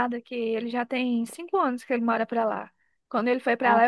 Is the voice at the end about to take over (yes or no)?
no